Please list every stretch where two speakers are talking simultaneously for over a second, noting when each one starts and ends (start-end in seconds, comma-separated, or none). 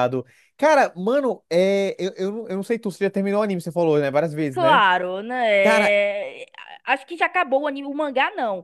none